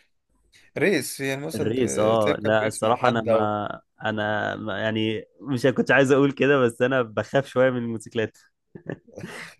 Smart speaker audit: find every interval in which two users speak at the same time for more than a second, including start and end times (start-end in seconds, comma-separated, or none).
1.6-3.6